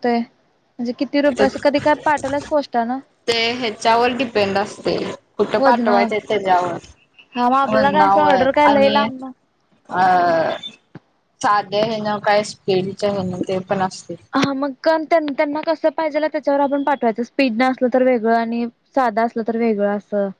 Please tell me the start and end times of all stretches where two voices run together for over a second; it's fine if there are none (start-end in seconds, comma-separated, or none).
7.7-9.0